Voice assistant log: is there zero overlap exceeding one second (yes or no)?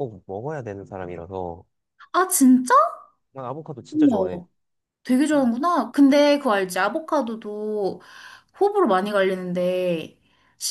yes